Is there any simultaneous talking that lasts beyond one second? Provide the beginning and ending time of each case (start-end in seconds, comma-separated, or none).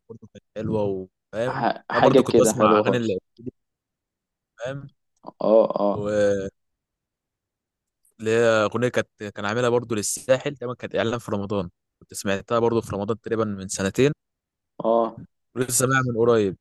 1.5-3.2